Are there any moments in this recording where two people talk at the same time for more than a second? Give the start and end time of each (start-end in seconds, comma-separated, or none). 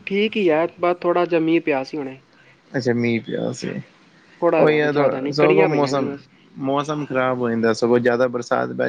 4.6-6.1